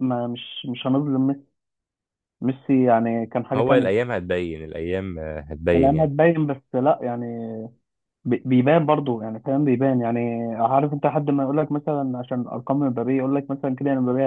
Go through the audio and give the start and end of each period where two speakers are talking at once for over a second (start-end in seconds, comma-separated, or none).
none